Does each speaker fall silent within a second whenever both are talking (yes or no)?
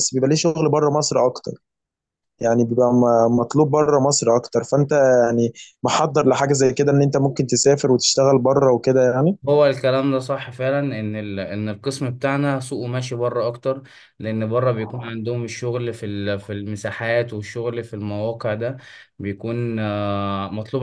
yes